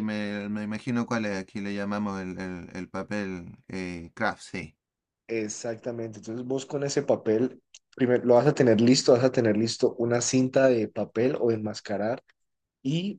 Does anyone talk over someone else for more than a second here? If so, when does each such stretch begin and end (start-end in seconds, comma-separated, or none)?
none